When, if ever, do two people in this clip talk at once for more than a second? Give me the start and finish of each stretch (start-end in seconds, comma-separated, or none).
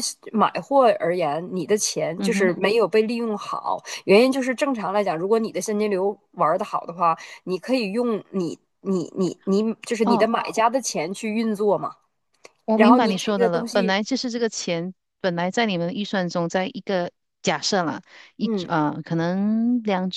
12.7-13.9